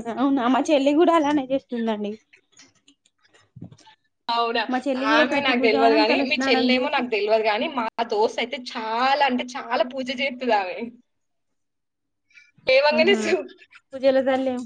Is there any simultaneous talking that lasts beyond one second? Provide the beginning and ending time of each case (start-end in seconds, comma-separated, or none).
5.1-7.0